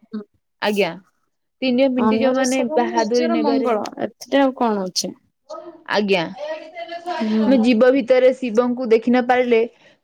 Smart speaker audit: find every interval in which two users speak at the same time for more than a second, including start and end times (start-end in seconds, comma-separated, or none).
2.1-3.7